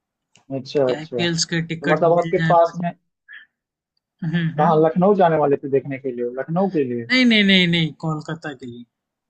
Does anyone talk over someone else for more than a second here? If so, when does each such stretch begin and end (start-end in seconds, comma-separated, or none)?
0.8-2.8